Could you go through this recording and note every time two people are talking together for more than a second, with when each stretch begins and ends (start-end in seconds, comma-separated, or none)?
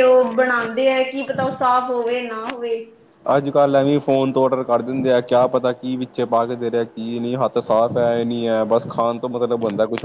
none